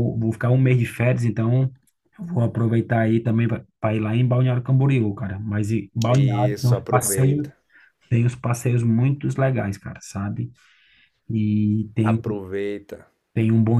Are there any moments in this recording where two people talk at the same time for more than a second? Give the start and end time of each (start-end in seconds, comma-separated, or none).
6.1-7.5